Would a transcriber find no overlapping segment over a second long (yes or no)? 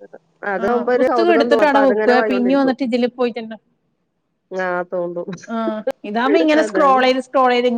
no